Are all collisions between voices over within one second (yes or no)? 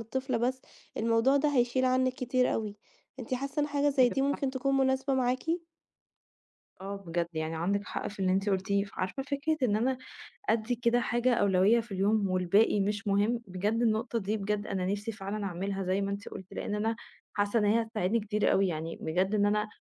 yes